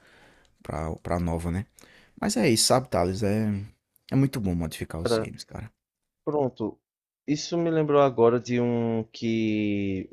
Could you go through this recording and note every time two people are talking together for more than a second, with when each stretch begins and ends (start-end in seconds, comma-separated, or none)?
none